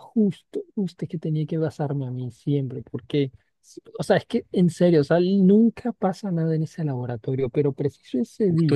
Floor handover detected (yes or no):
yes